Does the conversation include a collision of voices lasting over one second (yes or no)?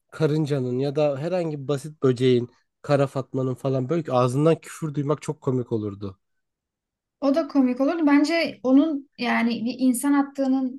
no